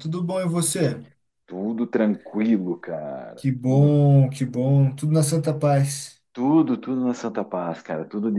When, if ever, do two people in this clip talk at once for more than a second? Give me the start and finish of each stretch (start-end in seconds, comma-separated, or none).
none